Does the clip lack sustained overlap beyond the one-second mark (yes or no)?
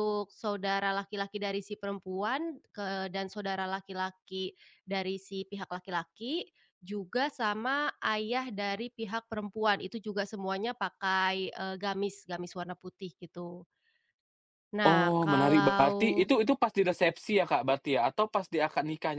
no